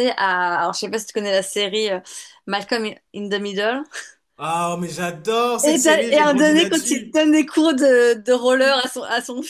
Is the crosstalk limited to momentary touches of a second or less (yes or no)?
no